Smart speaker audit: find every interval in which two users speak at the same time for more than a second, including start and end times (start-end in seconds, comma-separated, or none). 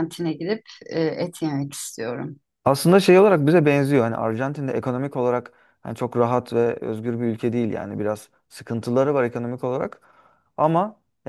none